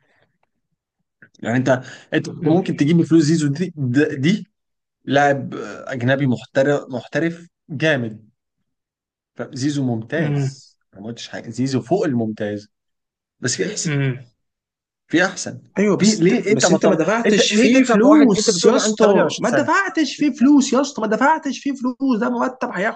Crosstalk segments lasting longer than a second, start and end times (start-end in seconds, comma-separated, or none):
16.0-19.7